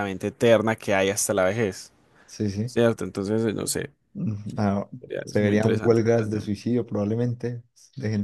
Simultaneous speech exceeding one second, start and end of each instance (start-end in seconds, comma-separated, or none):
5.2-6.6